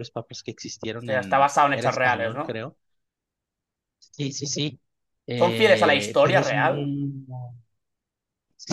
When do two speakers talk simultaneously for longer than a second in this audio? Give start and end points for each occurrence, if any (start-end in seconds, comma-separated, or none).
1.0-2.6, 5.4-6.8